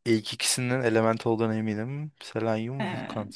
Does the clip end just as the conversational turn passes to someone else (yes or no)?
no